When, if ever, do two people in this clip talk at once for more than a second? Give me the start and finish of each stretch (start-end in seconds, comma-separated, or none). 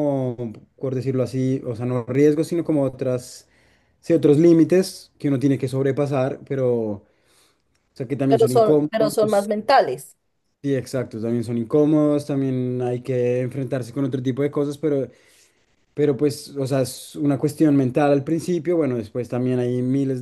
8.3-9.5